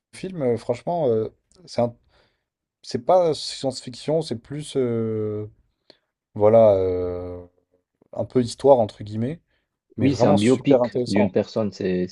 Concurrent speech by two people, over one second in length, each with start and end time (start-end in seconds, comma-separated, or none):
10.0-11.4